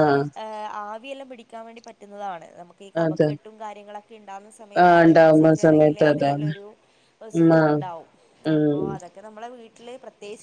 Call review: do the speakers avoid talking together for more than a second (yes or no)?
no